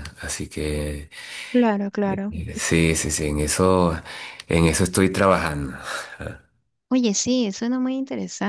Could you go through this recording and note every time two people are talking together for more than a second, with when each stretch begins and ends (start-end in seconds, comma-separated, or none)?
none